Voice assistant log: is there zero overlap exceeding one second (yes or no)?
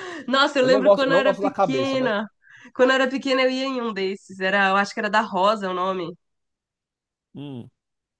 no